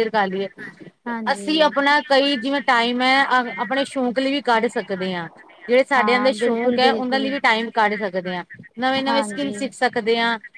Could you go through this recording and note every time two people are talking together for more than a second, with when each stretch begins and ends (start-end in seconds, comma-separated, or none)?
6.0-7.3